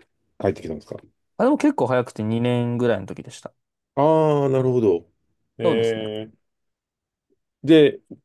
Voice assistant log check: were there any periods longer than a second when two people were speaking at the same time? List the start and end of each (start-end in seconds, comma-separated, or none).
none